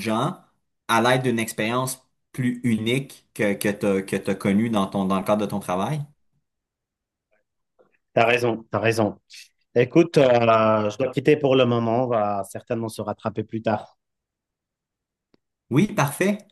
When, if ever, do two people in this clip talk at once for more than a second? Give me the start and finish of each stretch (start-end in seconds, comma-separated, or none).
none